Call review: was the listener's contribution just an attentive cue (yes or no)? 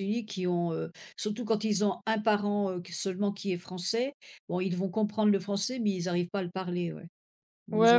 no